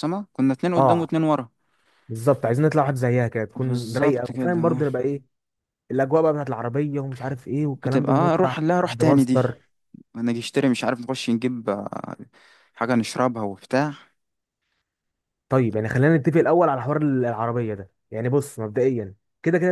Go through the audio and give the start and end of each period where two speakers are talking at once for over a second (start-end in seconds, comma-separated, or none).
3.6-4.8, 7.8-9.4